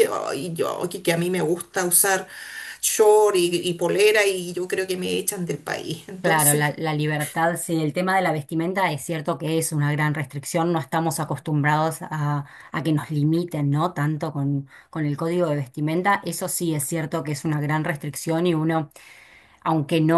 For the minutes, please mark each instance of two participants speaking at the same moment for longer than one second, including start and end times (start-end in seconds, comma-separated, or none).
none